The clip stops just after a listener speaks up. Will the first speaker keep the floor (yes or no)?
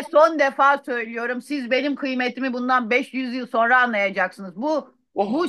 yes